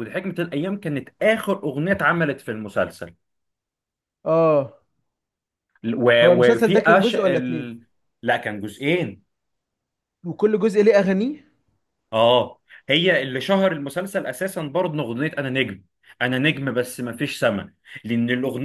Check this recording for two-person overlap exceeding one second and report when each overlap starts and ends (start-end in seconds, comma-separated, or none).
6.2-7.7